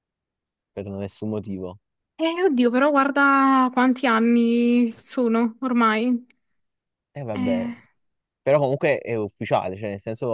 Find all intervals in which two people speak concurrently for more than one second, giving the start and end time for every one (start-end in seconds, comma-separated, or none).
none